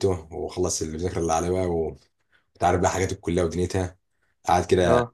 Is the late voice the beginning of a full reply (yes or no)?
no